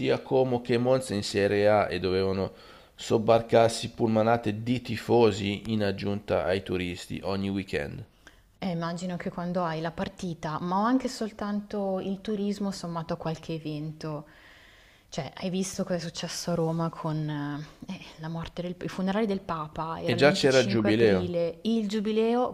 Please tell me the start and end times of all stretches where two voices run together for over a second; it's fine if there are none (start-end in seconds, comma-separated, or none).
20.0-21.4